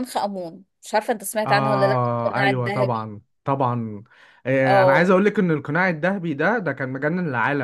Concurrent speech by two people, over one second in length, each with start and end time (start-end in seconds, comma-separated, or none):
1.5-3.1